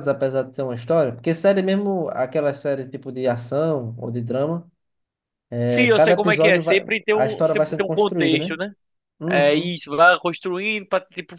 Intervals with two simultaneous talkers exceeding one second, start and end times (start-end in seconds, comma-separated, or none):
5.7-8.6